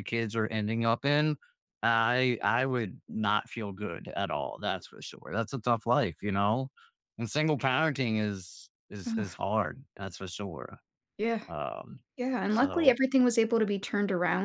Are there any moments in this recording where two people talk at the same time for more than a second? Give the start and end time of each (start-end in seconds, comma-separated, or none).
none